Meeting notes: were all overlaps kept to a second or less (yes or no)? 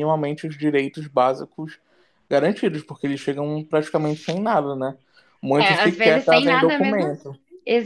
no